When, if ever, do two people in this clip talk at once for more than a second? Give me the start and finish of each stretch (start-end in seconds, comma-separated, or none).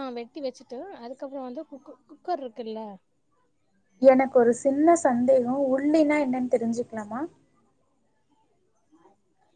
none